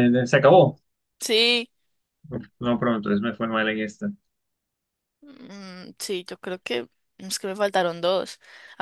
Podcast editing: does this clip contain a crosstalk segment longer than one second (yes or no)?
no